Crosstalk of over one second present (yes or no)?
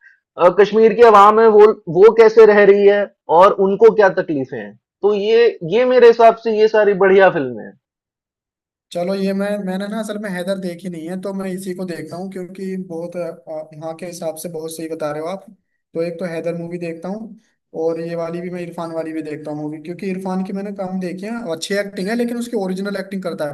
no